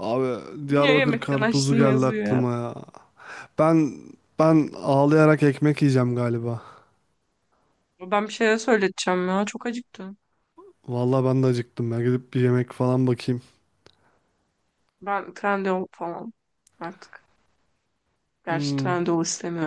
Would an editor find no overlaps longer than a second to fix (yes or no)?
no